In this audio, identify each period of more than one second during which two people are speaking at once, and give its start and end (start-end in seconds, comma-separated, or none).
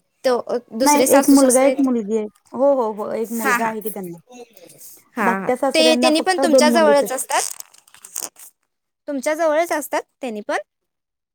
5.3-7.0